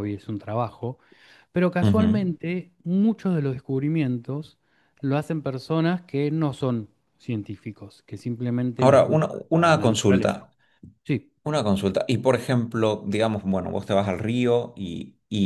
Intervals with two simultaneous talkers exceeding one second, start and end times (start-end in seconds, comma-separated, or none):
8.8-10.4